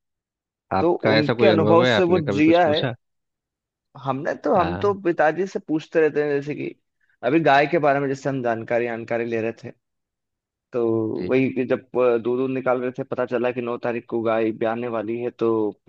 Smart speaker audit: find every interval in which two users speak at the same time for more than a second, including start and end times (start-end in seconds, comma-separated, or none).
0.8-2.8